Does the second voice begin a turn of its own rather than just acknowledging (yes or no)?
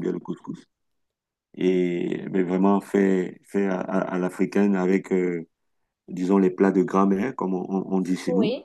yes